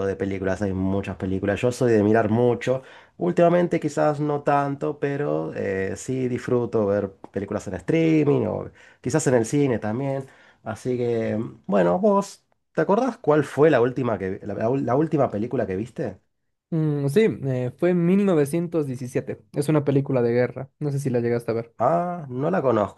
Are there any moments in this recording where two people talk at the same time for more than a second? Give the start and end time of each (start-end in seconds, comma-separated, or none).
none